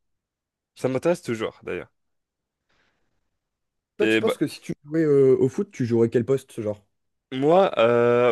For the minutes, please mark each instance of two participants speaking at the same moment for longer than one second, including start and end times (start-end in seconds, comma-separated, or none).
none